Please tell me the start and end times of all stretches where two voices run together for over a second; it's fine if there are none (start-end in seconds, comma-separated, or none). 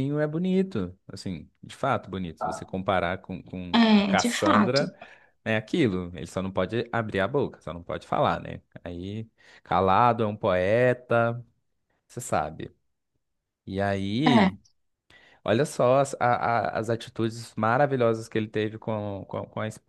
3.7-5.0